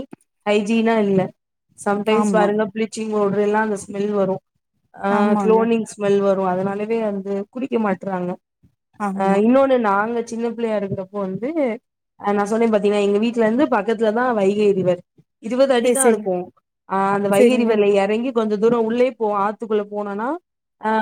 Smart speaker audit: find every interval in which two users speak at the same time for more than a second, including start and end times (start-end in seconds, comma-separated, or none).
none